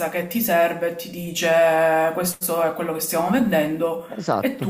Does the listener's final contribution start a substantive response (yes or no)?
yes